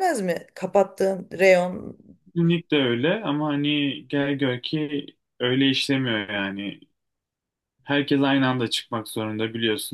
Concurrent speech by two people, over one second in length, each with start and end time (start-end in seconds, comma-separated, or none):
none